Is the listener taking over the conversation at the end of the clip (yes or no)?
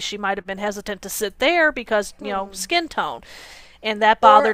yes